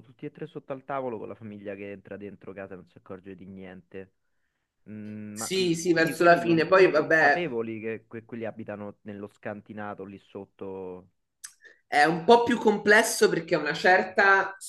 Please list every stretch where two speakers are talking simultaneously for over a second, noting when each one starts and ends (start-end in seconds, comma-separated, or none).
5.3-7.5